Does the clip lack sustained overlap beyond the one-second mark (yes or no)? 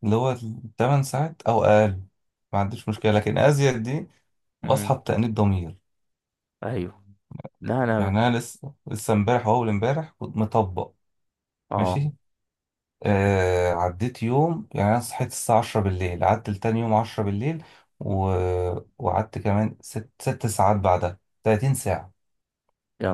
yes